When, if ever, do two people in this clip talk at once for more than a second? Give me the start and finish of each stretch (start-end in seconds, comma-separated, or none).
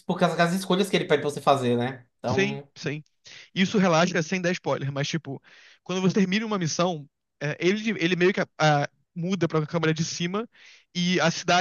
none